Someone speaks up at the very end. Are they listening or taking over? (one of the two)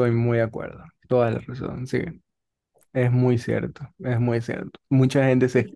listening